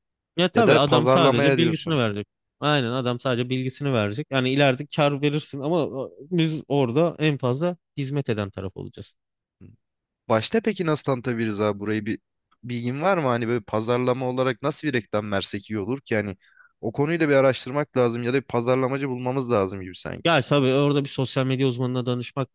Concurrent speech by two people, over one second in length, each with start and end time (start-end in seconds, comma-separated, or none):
0.6-2.0